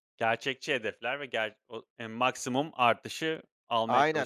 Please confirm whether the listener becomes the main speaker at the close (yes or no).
yes